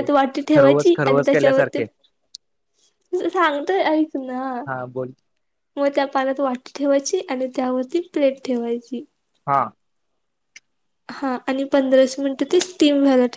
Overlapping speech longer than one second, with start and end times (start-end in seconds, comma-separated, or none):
0.6-1.8